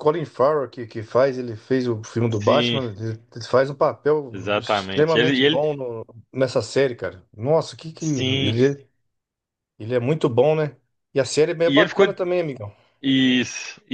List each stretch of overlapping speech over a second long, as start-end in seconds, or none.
4.3-5.7